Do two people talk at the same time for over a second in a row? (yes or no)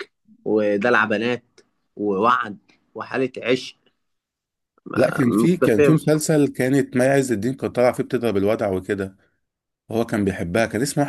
yes